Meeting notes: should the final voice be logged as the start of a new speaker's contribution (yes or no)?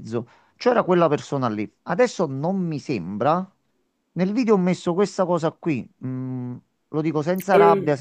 no